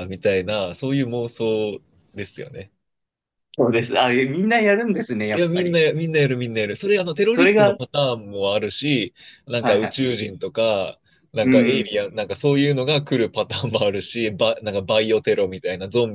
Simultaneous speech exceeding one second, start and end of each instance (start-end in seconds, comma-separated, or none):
none